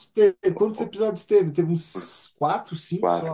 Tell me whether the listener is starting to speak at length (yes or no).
yes